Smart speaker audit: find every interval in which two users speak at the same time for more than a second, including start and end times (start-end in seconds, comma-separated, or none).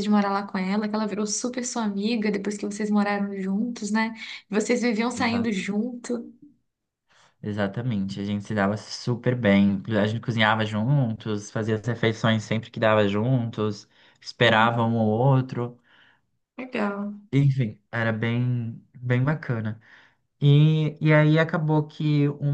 none